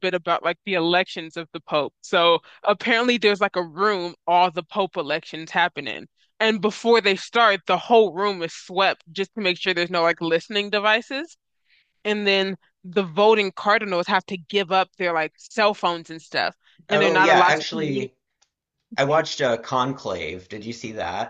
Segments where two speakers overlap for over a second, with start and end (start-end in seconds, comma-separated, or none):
16.9-18.1